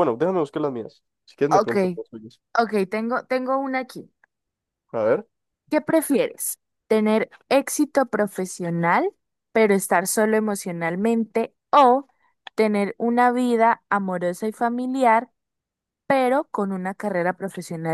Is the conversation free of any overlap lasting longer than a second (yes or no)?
yes